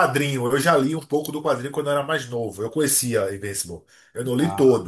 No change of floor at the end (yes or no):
yes